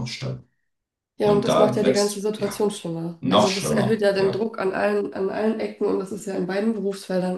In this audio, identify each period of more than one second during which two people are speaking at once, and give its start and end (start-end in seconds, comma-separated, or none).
1.2-2.5, 3.2-4.4